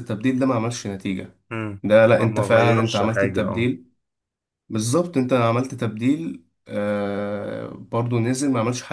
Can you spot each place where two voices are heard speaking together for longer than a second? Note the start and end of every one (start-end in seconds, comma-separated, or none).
2.2-3.7